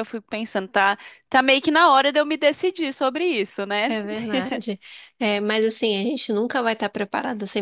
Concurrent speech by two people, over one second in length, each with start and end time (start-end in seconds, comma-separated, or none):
none